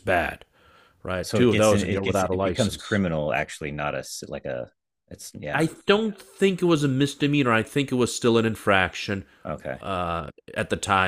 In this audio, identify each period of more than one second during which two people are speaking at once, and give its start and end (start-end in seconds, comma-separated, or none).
1.2-3.0